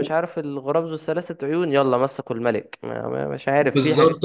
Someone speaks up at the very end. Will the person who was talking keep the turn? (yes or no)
no